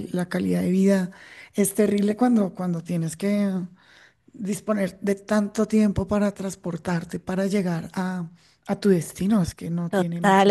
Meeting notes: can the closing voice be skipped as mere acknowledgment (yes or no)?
no